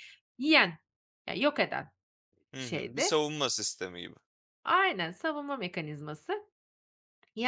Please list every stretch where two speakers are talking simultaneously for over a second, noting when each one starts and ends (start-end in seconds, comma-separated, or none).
none